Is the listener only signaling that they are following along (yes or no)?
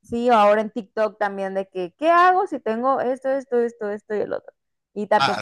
yes